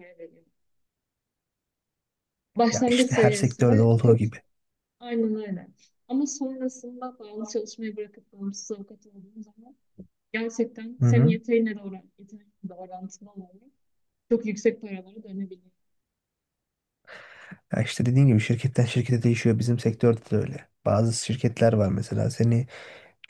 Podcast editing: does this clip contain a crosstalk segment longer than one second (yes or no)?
yes